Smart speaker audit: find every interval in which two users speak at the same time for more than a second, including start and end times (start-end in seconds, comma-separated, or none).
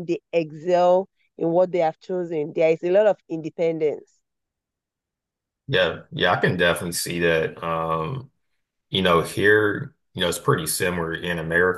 none